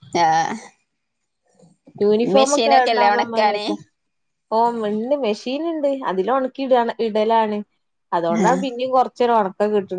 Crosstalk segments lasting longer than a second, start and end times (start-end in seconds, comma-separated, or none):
2.4-3.6